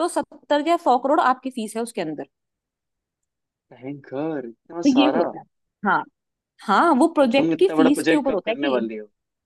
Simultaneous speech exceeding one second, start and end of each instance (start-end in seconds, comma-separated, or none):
7.2-8.8